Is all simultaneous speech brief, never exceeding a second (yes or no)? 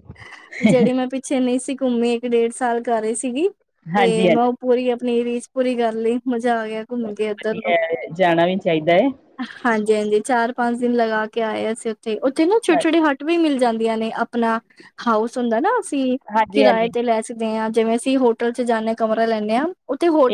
yes